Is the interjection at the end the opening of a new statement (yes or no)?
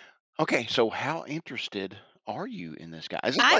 yes